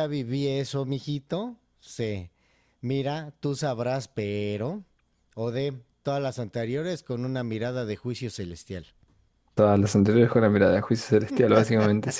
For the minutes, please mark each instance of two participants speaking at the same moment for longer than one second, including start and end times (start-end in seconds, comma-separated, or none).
none